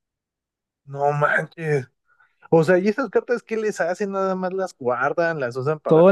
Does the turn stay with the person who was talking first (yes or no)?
no